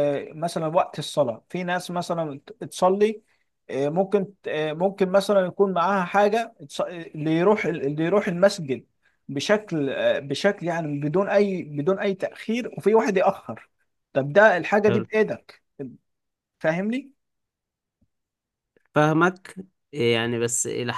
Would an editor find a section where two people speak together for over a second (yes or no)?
no